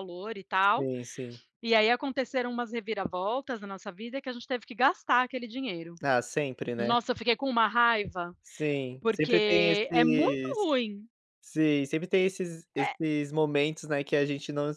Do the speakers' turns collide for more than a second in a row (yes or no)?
yes